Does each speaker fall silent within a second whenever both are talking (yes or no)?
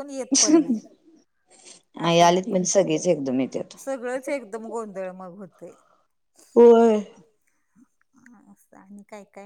yes